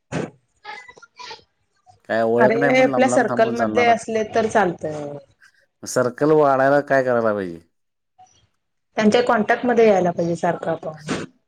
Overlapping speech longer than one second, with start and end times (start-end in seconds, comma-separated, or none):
2.4-3.9